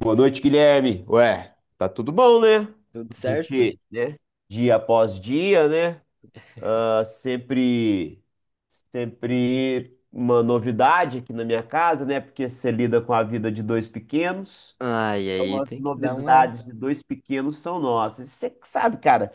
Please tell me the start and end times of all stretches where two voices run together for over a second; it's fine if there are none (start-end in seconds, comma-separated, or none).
15.3-16.6